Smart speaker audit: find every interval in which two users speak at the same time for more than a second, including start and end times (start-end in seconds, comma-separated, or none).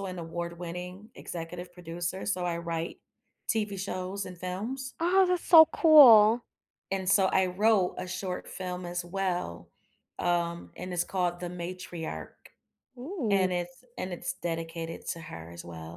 none